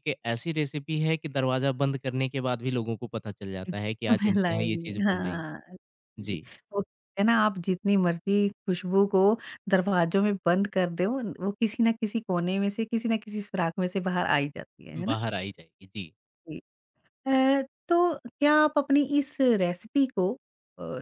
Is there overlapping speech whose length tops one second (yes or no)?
yes